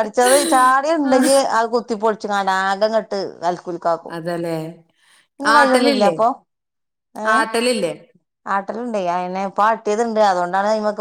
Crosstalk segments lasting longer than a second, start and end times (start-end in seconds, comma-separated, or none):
none